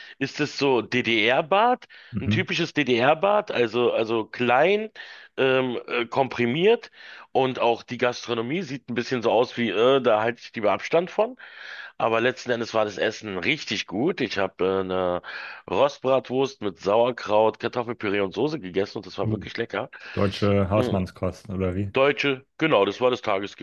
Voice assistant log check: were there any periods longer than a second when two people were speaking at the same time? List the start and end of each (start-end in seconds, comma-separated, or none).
none